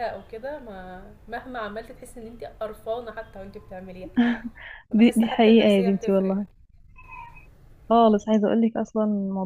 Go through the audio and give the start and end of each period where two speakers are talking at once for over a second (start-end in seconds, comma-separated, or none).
4.9-6.4